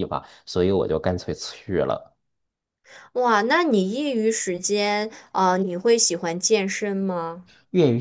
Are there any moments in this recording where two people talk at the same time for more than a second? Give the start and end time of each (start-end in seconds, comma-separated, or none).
none